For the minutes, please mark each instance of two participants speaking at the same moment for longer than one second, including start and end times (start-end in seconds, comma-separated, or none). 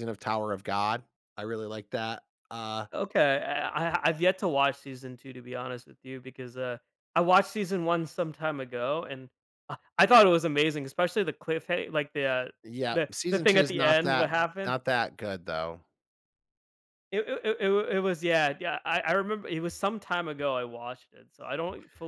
12.9-14.8